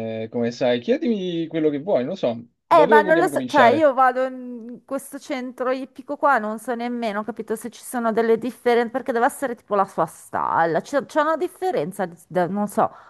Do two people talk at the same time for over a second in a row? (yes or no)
yes